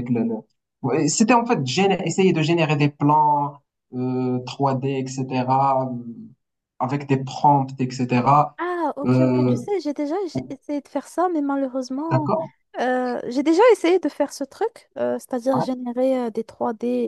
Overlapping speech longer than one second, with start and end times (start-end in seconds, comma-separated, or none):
none